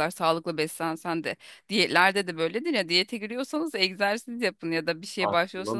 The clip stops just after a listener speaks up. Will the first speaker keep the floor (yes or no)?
yes